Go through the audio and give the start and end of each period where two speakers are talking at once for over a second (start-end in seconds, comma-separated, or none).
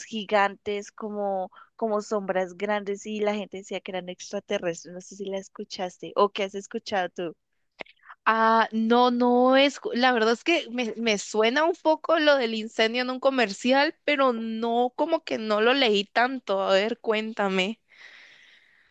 none